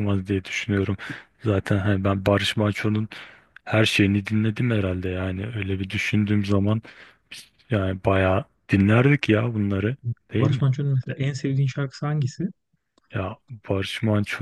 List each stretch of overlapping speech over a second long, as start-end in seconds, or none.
none